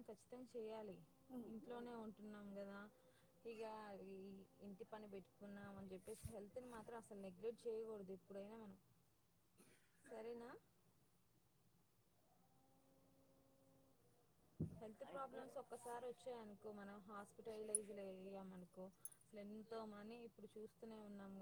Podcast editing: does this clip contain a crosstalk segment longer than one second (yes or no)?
yes